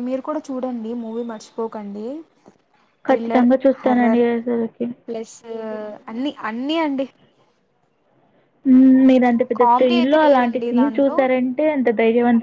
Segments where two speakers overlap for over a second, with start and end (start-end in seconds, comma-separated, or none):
9.6-11.2